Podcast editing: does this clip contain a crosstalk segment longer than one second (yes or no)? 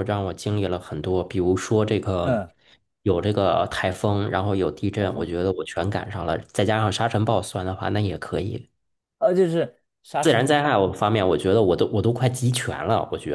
no